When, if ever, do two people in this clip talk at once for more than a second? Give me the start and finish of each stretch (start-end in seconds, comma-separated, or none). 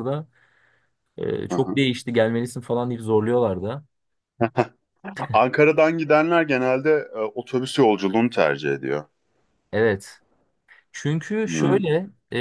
none